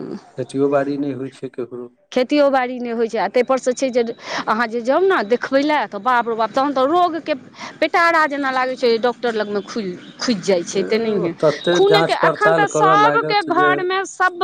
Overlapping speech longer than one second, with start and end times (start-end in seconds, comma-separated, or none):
11.8-13.7